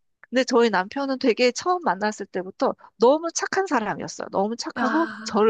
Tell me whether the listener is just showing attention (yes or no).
yes